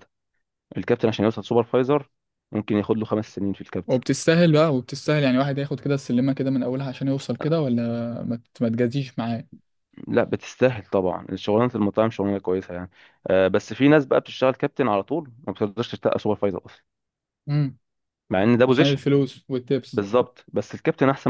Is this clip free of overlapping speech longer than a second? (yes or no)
yes